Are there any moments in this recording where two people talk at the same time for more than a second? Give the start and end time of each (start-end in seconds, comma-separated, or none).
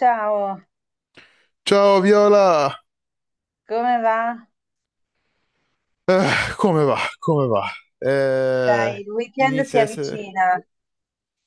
8.7-10.3